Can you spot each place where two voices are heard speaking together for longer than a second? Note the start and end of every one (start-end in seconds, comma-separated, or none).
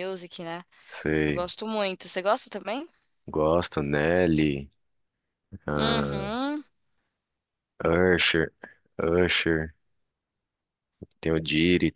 none